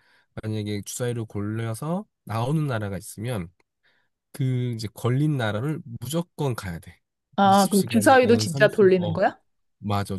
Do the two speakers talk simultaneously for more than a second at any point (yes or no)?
yes